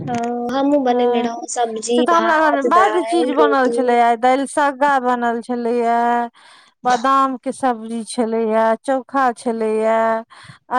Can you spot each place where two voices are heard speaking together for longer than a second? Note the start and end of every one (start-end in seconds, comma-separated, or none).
1.9-3.8